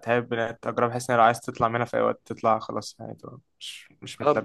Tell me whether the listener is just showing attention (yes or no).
no